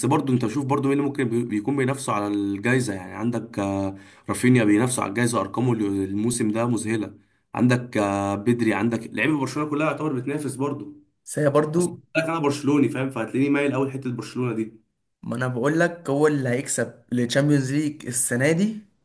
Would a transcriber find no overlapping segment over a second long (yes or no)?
yes